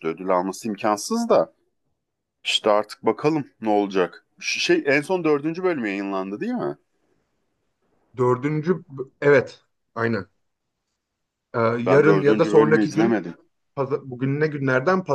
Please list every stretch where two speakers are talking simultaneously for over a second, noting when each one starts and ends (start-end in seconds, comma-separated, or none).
11.8-13.2